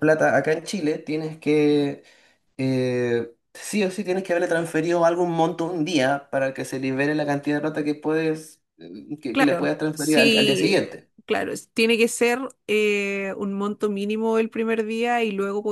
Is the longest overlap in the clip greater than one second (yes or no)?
yes